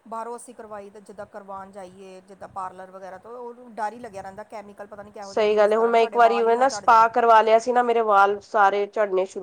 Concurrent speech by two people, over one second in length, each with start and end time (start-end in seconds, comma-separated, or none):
5.2-7.0